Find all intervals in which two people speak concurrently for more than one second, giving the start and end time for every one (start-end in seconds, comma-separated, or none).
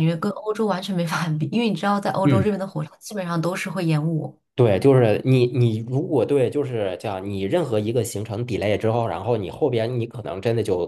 none